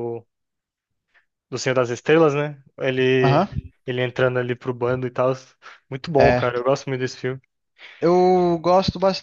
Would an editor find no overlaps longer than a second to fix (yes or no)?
yes